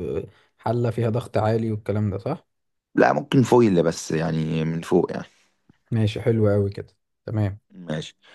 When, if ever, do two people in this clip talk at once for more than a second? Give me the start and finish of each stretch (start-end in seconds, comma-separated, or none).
none